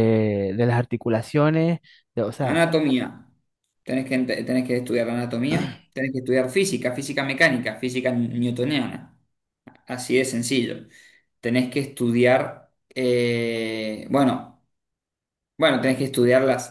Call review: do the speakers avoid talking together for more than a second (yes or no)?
yes